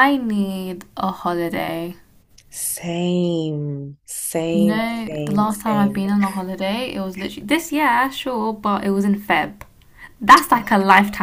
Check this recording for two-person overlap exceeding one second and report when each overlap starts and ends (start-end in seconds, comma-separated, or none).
4.5-6.0